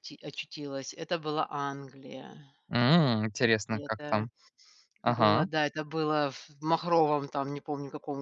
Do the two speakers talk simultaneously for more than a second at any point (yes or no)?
no